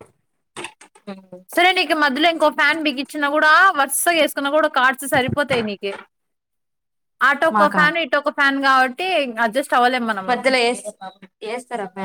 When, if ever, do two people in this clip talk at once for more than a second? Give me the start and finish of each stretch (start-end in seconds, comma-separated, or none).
none